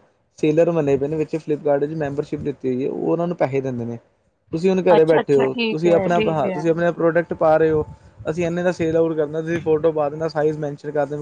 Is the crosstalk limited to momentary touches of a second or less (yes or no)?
no